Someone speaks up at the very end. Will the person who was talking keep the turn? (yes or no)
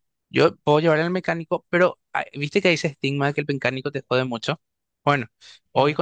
yes